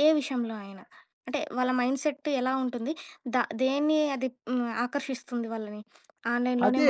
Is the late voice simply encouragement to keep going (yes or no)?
no